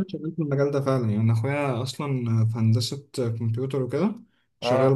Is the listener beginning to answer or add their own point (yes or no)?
no